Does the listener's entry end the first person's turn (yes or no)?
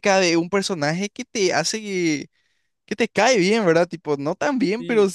no